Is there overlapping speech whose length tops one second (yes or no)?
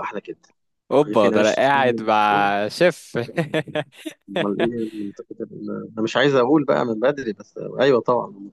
yes